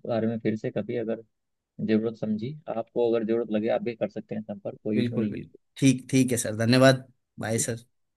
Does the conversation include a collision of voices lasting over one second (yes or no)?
no